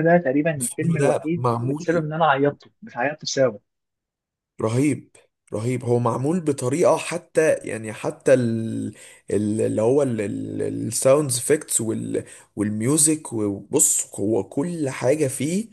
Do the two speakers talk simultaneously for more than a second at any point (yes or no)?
yes